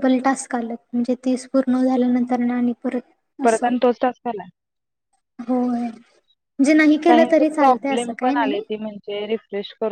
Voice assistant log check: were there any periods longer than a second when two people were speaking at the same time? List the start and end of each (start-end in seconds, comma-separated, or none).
7.1-8.6